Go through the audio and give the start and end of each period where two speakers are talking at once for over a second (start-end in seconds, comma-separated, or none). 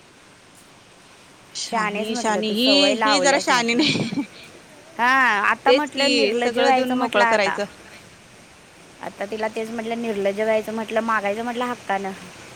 1.7-3.8, 5.7-7.6